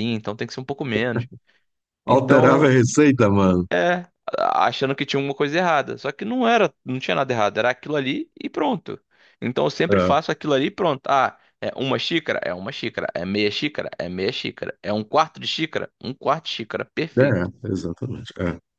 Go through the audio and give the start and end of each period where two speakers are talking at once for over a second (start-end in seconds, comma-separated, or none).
none